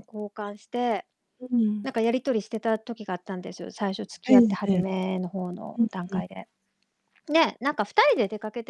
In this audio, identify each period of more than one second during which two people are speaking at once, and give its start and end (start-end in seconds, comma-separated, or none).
none